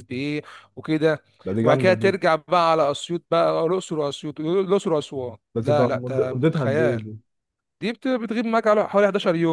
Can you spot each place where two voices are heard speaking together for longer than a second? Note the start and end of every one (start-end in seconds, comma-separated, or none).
5.5-7.0